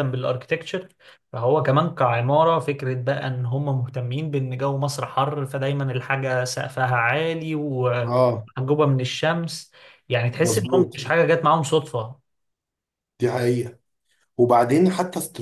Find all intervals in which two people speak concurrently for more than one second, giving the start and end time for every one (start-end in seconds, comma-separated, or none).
none